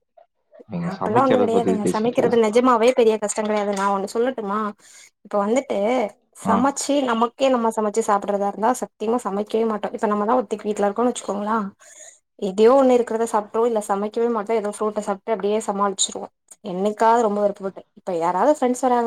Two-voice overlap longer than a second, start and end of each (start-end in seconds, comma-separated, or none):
0.9-2.4